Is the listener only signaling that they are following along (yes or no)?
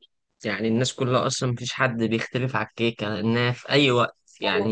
yes